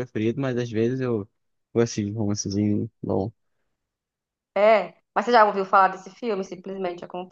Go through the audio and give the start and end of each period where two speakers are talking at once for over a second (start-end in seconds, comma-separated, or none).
none